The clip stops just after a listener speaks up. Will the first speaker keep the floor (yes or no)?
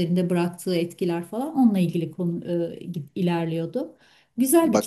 no